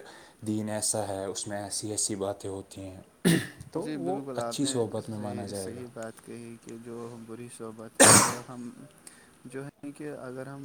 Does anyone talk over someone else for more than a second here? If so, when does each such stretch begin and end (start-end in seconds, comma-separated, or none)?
3.7-5.8